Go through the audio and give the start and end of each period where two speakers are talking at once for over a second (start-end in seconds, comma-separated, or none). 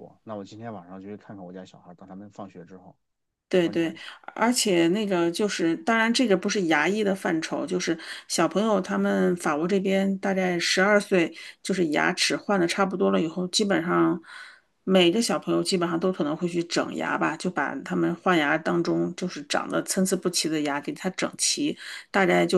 none